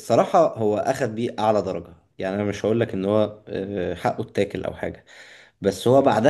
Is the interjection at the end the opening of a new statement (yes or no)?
no